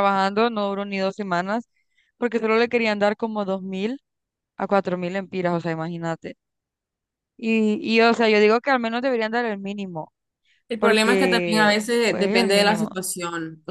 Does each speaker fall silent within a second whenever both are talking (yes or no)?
no